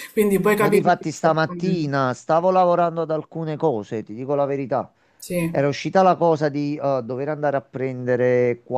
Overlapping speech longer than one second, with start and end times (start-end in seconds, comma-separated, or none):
0.6-2.0